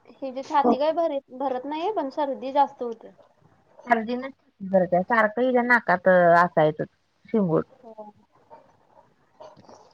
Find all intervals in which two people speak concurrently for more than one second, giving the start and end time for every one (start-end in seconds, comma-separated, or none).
none